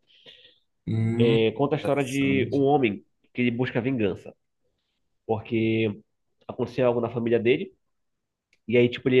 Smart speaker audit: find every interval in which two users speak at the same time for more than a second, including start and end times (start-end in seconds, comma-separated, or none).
1.2-2.6